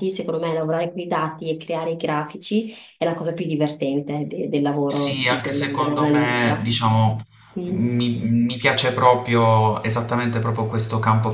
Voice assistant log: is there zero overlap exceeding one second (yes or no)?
no